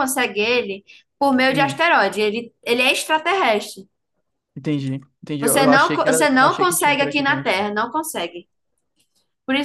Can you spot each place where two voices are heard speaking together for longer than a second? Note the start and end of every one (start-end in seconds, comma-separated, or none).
5.4-7.5